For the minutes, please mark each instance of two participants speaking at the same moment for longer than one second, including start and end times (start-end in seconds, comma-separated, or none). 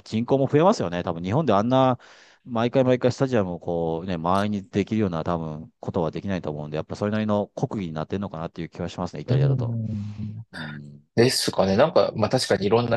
none